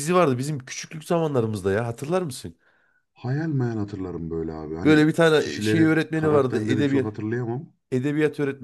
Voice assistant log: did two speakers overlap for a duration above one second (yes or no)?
yes